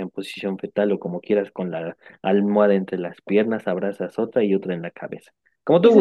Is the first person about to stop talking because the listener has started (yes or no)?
yes